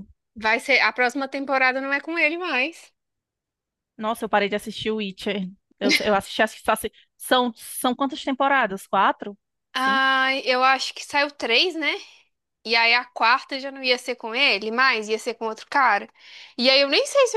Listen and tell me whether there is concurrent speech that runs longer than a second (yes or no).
no